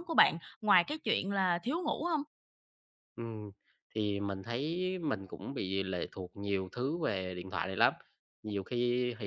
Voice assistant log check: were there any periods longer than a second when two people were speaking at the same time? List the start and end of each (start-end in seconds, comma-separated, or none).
none